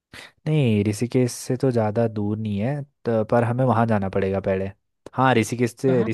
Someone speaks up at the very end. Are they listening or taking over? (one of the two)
listening